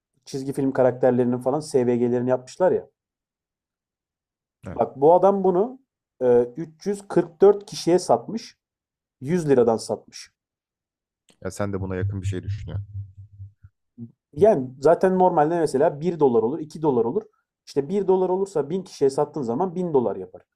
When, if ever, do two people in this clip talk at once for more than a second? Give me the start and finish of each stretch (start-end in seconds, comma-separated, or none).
none